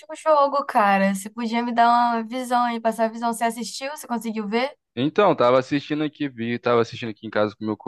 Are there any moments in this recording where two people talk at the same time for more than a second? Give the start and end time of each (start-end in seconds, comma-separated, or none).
none